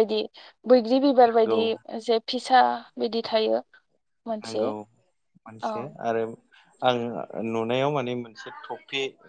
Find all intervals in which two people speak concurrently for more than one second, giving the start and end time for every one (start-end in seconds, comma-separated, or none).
none